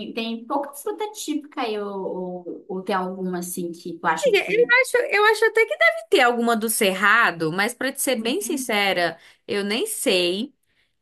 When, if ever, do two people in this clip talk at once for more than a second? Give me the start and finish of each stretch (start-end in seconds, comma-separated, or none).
none